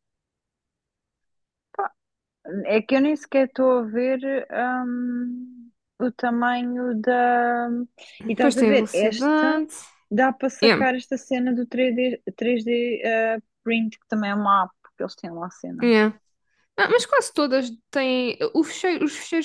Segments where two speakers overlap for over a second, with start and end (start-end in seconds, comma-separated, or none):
8.3-9.6